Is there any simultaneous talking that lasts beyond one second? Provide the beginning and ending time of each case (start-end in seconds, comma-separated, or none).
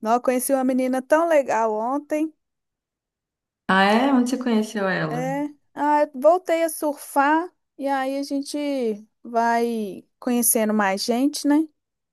none